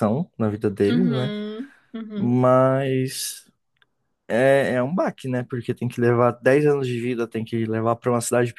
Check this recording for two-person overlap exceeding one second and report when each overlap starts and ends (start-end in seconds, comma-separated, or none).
none